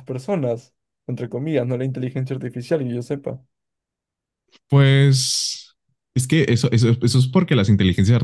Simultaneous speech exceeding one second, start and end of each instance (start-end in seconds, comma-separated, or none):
none